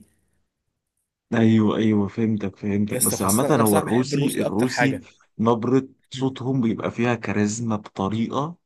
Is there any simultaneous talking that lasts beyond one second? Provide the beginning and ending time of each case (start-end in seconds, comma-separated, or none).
2.9-5.0